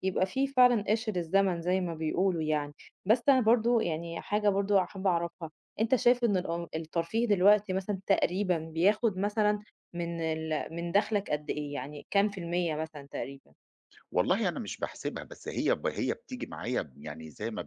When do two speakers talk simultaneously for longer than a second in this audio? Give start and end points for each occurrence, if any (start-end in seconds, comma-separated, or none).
none